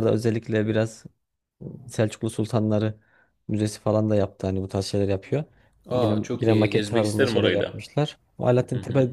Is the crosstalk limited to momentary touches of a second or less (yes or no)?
no